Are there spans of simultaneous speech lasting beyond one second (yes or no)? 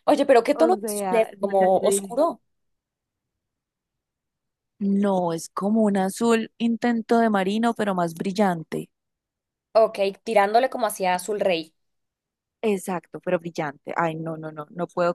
yes